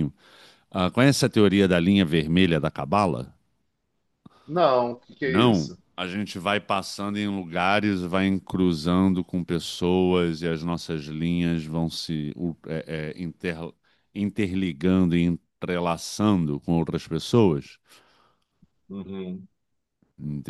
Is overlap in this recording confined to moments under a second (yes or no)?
yes